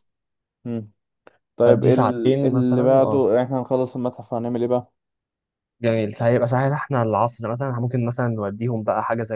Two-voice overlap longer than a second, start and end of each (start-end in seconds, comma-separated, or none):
1.6-3.3